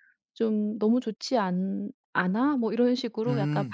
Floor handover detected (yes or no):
no